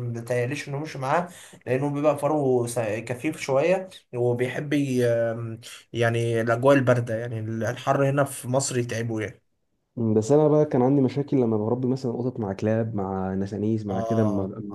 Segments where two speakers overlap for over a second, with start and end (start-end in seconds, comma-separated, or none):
none